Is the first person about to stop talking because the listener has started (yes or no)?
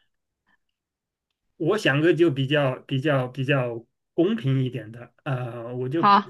no